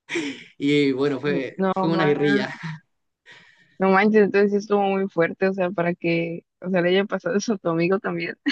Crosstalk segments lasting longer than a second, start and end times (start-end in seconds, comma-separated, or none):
1.2-2.5